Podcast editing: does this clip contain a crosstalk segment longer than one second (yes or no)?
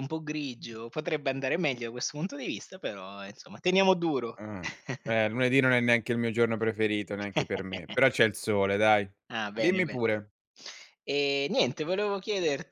no